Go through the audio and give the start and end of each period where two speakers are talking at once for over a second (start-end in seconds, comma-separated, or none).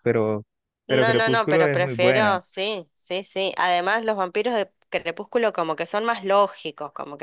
0.9-2.4